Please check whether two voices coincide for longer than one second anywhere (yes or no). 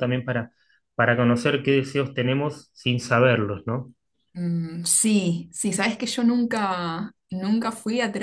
no